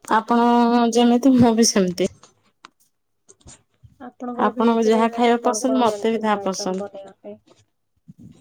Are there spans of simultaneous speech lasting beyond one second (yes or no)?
yes